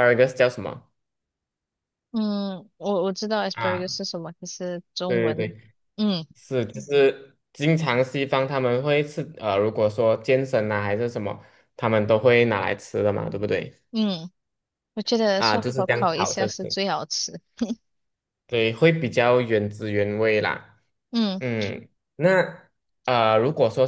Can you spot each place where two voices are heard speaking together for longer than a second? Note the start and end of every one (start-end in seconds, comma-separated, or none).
15.4-16.8